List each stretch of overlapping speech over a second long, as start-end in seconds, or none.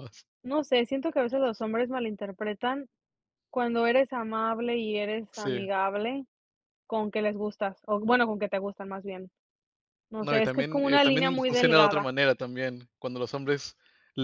10.2-12.1